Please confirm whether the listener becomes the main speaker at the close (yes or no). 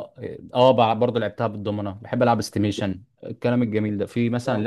no